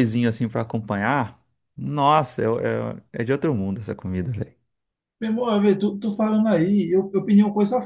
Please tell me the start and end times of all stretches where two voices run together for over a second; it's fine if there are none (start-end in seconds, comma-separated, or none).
none